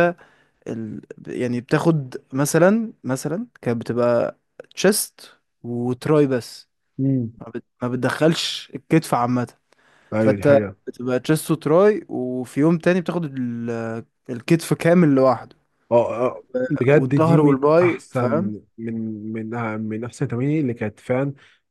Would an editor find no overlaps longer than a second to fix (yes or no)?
no